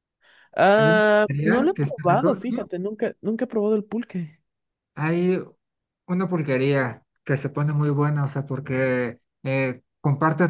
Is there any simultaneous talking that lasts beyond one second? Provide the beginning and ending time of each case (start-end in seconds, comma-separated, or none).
0.8-2.4